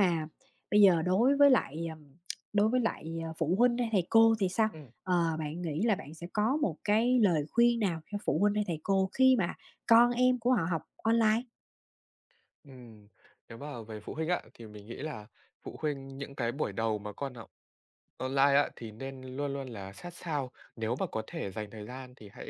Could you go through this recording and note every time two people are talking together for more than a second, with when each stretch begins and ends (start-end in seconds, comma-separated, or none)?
none